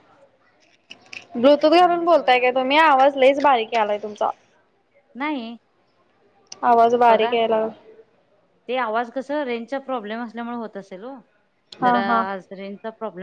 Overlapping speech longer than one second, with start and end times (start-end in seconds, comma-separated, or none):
1.4-2.7